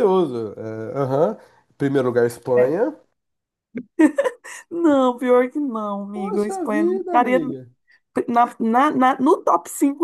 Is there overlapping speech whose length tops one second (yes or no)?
yes